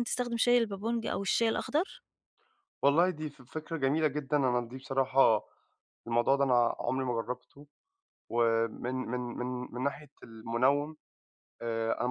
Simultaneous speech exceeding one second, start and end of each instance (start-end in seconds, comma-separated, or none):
none